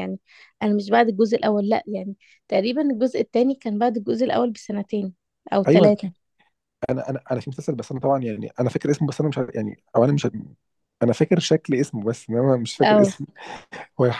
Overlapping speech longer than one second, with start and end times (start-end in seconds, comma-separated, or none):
none